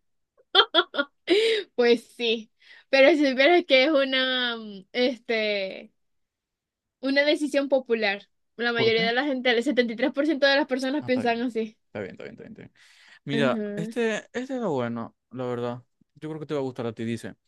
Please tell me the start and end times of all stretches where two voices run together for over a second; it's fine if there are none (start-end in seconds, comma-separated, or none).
none